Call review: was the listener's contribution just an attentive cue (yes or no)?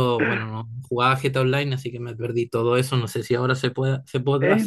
no